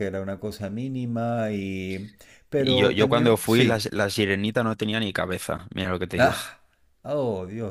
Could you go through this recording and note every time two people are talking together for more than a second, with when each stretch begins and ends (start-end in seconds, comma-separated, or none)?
2.6-3.9